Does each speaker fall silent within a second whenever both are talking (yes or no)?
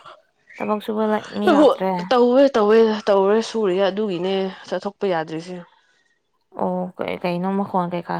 yes